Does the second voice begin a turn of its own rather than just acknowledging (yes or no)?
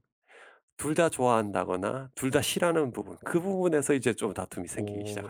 yes